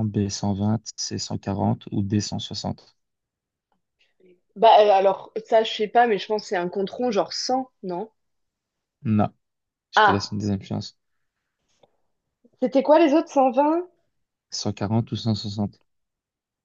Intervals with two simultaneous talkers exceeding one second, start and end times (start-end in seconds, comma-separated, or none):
none